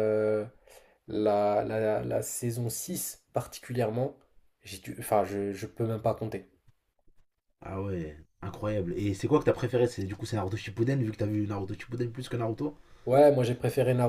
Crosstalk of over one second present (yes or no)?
no